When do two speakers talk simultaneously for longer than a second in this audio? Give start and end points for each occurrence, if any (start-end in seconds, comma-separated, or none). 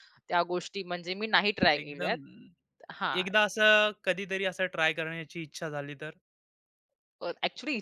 none